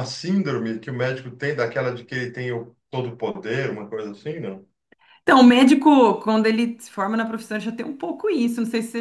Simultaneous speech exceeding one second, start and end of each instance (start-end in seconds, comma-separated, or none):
none